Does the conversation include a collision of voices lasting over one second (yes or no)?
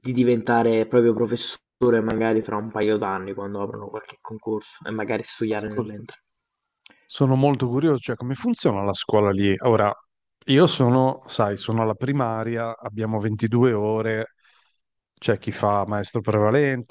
no